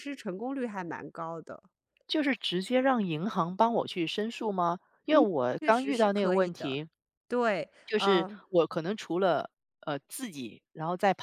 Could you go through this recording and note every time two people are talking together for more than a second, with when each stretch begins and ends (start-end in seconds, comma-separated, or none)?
5.1-6.8